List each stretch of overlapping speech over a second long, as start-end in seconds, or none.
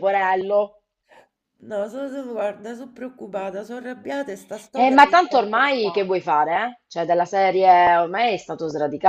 4.7-6.1